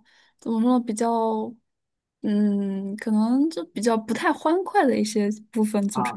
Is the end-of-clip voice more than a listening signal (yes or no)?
yes